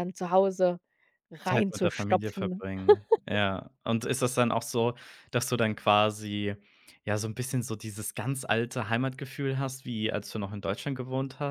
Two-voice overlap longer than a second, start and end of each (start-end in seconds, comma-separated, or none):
1.4-2.6